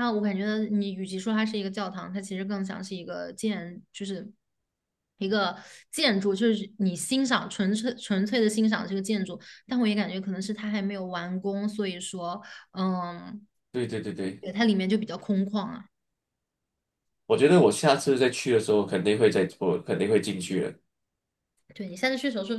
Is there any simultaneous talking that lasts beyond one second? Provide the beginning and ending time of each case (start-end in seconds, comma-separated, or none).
none